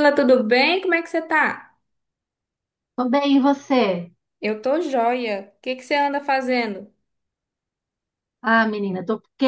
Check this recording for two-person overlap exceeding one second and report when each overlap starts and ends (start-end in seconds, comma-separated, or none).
none